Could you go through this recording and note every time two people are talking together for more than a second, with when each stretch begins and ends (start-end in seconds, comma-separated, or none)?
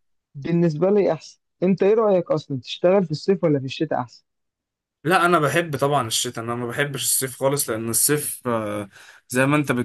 none